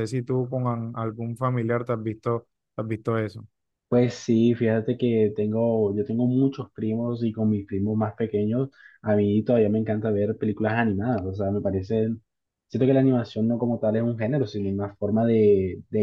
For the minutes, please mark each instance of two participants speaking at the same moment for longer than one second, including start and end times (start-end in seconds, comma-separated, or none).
none